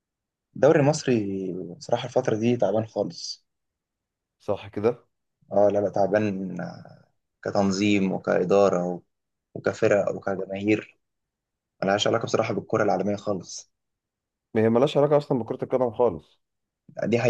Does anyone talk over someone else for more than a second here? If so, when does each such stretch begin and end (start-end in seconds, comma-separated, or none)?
none